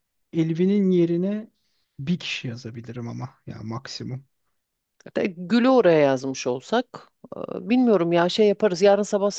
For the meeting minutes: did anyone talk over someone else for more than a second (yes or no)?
no